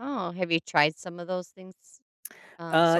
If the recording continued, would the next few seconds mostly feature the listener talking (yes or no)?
yes